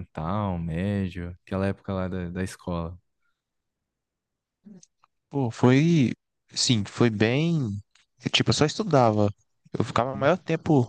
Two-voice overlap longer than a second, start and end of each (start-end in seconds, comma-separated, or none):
none